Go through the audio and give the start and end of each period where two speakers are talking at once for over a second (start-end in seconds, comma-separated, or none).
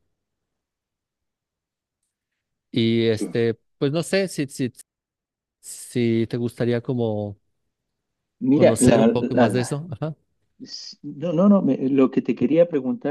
8.5-9.8